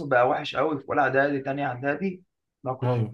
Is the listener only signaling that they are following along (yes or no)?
yes